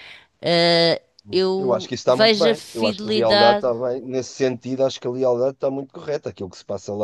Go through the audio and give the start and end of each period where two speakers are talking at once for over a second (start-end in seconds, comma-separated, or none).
1.6-3.7